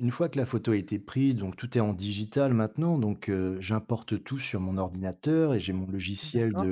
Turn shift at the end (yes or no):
no